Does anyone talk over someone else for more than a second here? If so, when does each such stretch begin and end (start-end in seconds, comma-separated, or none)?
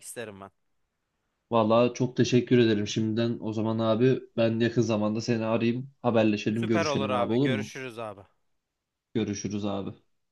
6.5-7.7